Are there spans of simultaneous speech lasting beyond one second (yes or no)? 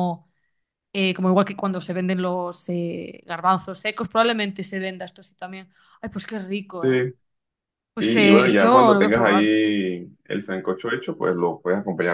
yes